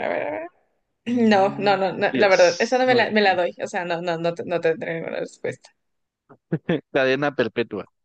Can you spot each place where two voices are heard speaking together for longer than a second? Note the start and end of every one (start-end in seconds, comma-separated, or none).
1.1-3.4